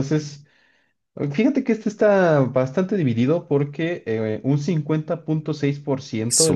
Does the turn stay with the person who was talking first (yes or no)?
yes